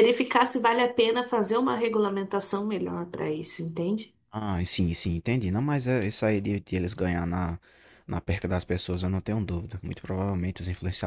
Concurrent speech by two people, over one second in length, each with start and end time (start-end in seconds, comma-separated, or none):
none